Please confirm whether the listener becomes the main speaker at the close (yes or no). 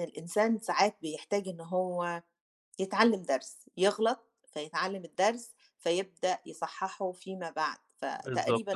yes